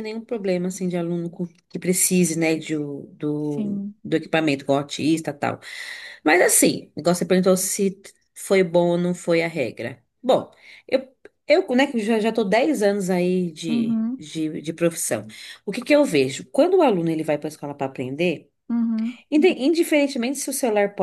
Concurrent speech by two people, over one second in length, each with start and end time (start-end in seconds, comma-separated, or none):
none